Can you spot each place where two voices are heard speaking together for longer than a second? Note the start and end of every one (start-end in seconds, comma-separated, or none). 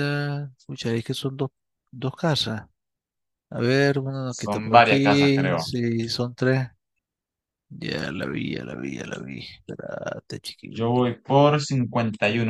4.4-5.7